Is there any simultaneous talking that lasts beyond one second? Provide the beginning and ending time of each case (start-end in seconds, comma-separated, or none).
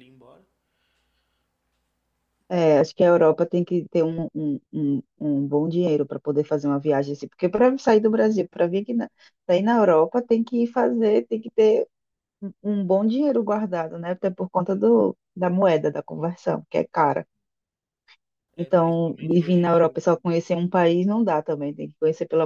18.6-20.2